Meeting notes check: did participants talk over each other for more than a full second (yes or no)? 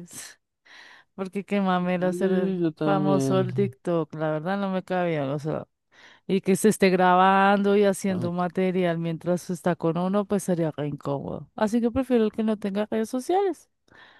yes